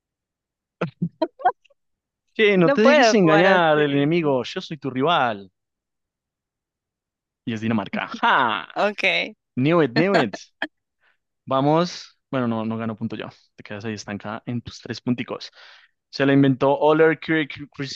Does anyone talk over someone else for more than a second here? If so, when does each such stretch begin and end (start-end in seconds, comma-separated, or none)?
2.6-4.4